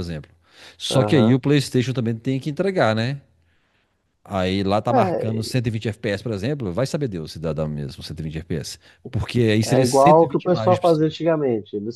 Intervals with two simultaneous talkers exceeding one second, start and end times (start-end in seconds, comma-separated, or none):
9.6-11.1